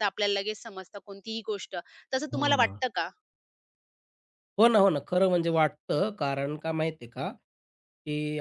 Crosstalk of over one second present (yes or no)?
no